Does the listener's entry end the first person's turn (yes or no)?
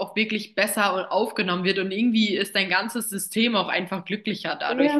yes